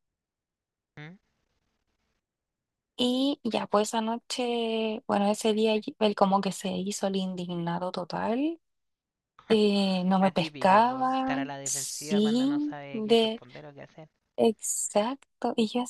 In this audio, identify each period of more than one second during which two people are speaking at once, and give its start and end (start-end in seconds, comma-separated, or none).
10.2-13.4